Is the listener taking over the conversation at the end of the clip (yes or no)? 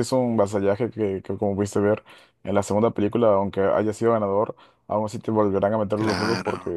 no